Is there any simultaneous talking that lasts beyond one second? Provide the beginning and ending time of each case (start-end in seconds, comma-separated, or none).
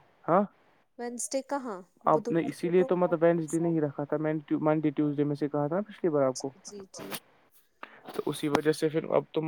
2.1-3.7